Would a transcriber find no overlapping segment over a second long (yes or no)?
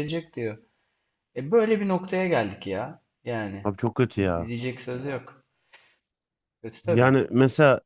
yes